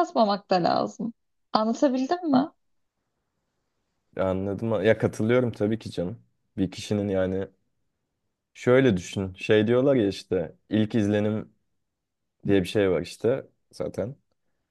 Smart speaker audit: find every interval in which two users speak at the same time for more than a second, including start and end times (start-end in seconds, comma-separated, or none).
none